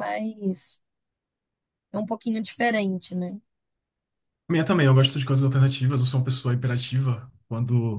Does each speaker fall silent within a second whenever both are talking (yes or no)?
yes